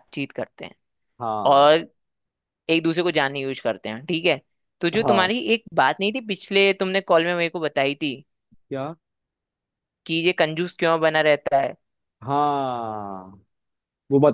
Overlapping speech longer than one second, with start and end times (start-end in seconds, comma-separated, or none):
none